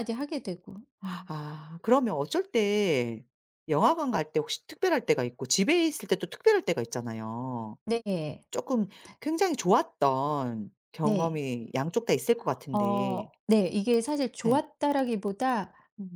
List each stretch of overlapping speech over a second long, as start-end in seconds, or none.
none